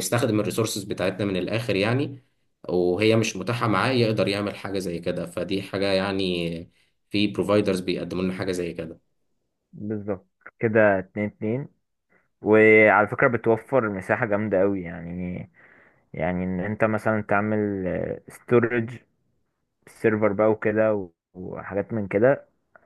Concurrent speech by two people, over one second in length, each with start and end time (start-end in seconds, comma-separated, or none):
none